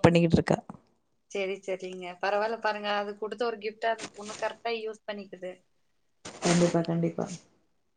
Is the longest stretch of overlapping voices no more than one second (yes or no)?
yes